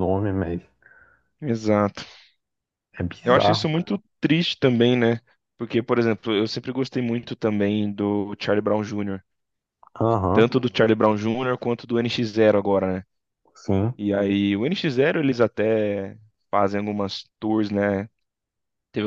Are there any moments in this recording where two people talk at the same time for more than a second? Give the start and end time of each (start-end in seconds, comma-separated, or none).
none